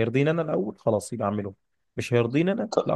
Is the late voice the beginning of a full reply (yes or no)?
no